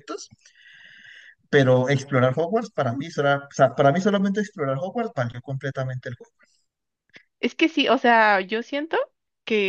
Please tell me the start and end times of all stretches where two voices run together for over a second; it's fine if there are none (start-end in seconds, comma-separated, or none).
none